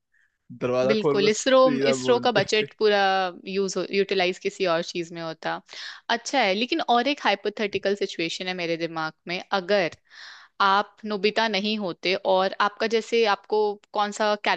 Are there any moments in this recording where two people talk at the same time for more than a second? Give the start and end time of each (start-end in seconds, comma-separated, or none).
0.9-2.7